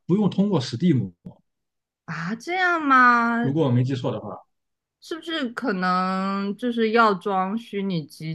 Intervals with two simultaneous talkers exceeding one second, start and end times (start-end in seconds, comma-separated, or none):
none